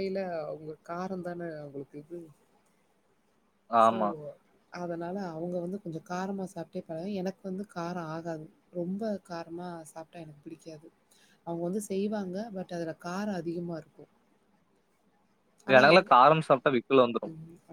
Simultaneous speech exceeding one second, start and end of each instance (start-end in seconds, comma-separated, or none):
none